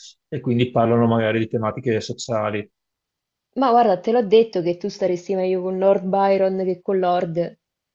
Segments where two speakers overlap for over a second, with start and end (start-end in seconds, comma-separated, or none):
none